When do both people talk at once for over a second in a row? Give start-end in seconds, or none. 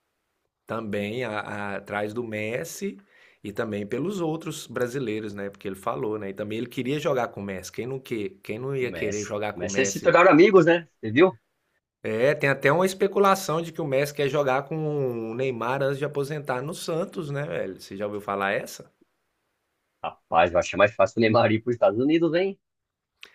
8.8-10.2